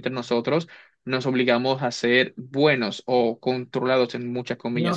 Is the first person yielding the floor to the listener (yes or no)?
yes